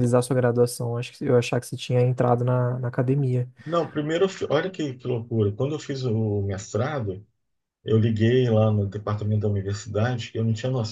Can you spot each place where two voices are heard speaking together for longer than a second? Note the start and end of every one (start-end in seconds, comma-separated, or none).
none